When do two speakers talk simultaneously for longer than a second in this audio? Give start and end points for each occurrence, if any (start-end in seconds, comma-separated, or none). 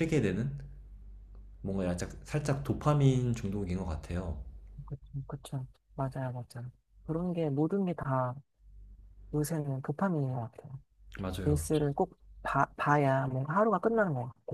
none